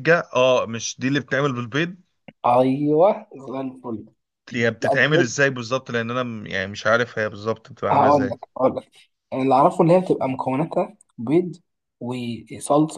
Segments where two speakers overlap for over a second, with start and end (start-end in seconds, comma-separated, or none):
none